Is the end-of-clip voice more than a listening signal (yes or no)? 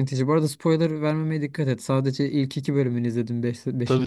yes